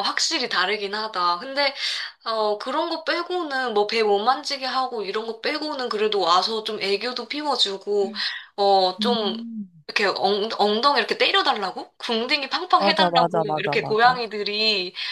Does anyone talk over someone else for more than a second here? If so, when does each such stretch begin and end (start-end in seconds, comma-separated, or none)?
12.8-14.2